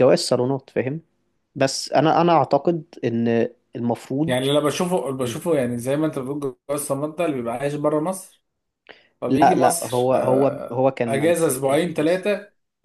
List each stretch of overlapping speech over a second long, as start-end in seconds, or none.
9.3-12.3